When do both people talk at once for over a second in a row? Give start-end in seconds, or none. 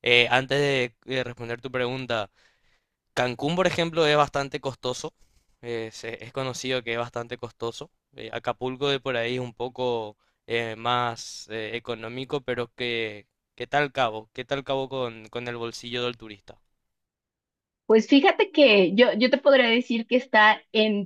none